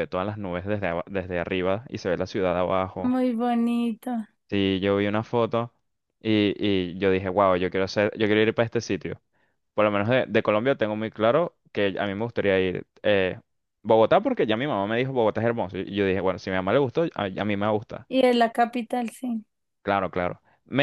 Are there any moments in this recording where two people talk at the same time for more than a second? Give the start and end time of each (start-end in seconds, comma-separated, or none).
none